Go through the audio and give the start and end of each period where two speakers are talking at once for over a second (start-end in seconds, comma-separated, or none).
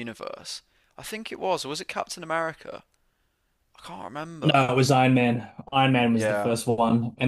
none